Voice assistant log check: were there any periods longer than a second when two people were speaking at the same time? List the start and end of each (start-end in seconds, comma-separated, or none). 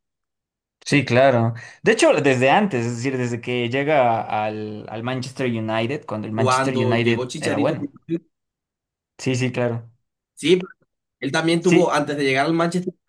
6.3-7.8